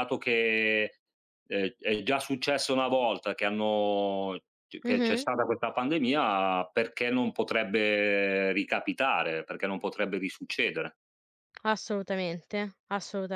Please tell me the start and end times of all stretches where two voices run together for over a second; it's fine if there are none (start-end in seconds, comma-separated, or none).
none